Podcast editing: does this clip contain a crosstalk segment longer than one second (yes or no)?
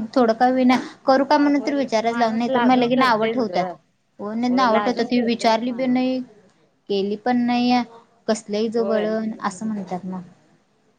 yes